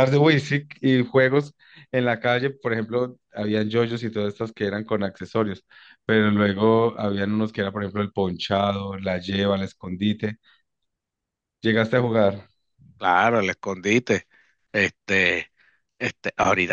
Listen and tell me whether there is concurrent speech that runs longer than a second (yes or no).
no